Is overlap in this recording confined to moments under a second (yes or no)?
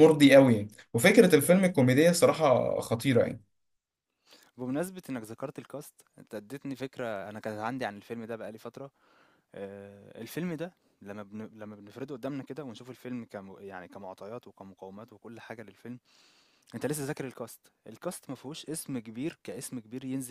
yes